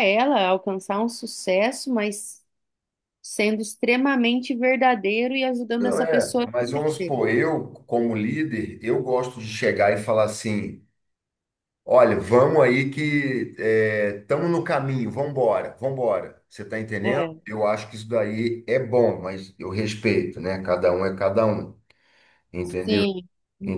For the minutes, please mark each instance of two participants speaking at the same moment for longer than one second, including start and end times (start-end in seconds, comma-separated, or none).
5.8-7.1